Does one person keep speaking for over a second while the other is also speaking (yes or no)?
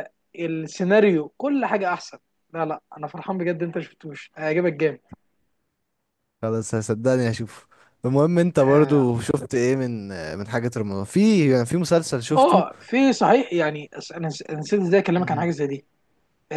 no